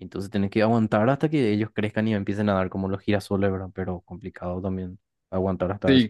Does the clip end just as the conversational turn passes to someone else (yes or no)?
yes